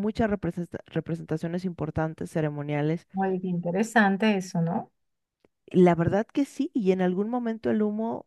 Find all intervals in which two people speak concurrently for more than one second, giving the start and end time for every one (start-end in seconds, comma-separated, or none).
none